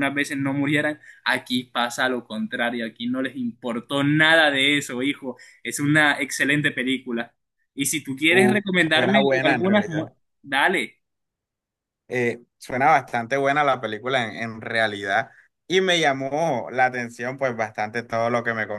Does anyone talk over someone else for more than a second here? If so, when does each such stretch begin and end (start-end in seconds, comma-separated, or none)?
8.3-10.1